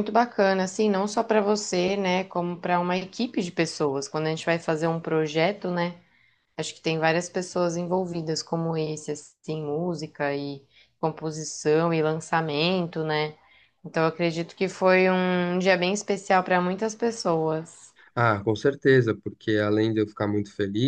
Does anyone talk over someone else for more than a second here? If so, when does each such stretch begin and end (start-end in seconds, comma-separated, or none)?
none